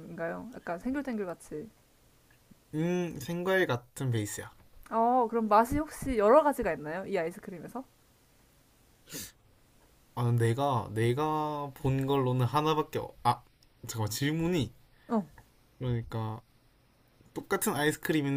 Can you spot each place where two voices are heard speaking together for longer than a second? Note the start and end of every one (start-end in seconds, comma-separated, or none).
none